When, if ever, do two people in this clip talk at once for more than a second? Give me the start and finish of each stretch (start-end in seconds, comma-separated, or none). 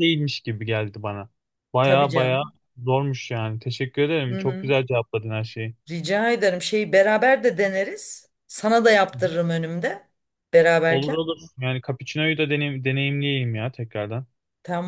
none